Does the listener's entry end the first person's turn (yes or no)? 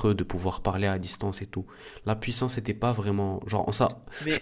no